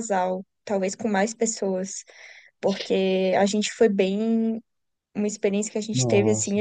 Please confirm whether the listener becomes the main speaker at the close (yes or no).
no